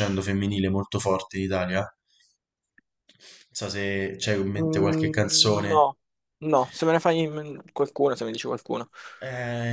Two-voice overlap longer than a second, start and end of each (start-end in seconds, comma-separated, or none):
4.5-5.9